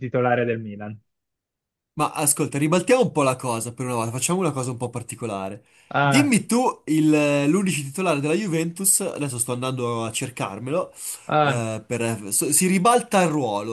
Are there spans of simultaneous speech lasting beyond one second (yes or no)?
no